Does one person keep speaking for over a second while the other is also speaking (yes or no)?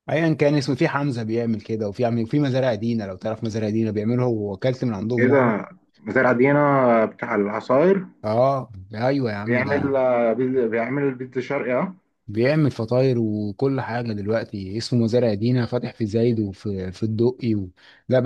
no